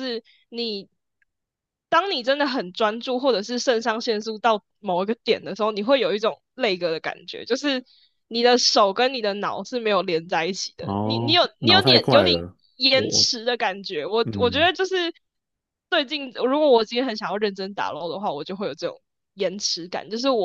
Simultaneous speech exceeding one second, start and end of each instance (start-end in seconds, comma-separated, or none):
10.8-13.3